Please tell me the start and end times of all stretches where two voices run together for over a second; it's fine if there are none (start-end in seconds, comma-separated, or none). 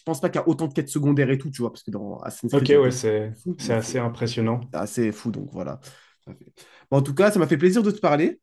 2.5-4.0